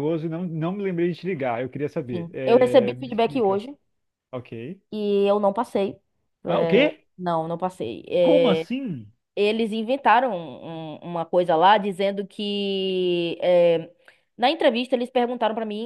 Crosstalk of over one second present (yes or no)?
yes